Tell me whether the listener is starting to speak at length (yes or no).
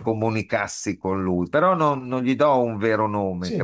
yes